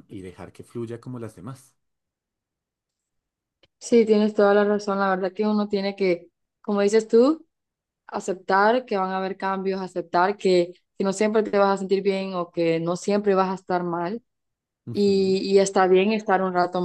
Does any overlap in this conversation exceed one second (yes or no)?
no